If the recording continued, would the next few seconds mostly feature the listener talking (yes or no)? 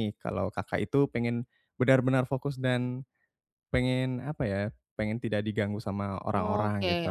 yes